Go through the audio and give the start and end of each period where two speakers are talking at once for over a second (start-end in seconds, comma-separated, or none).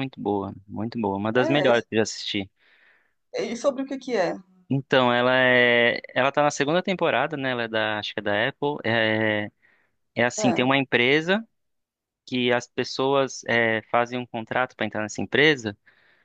none